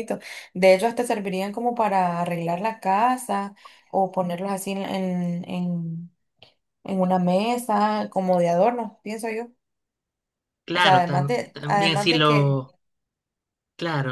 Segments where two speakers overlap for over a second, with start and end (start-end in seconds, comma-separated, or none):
10.7-12.6